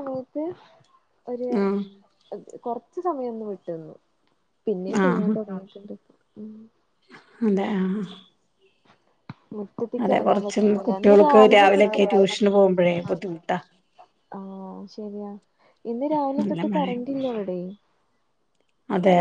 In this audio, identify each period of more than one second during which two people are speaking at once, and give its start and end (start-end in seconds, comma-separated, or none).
10.0-12.0